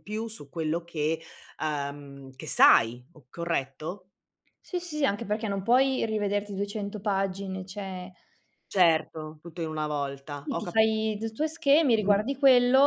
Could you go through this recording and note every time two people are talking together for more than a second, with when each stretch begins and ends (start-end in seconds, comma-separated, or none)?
none